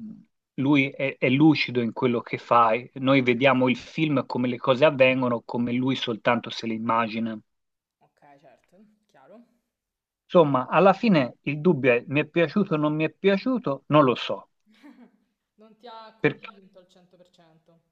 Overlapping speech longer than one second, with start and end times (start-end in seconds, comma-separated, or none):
none